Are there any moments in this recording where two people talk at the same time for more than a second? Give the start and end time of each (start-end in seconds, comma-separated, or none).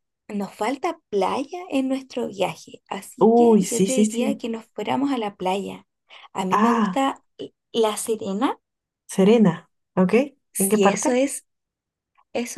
3.2-4.4